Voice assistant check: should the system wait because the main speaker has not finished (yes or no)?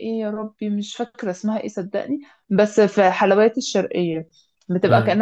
yes